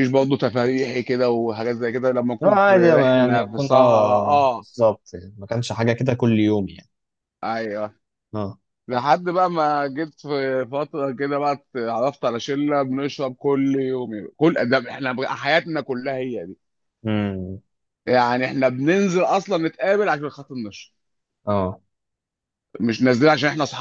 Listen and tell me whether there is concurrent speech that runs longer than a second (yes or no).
yes